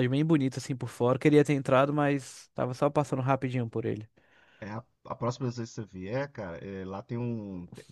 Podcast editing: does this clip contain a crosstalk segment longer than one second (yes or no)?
no